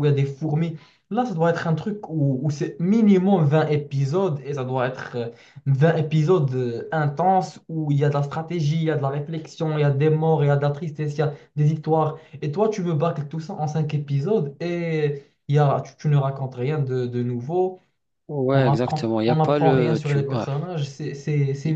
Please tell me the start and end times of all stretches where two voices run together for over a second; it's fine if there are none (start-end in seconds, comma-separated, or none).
18.5-20.5